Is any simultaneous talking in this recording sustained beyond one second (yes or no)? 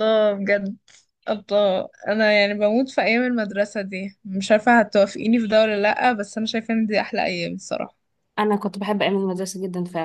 no